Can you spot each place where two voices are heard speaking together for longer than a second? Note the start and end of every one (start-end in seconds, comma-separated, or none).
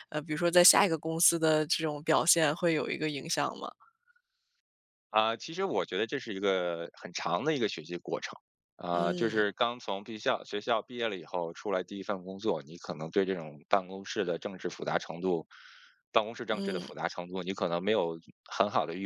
none